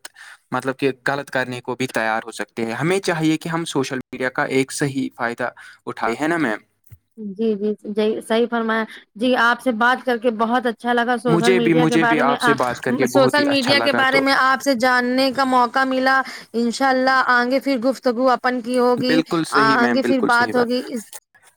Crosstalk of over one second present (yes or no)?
yes